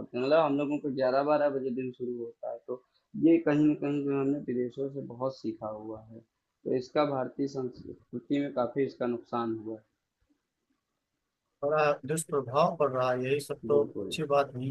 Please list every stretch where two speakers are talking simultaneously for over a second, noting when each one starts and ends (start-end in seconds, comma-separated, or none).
none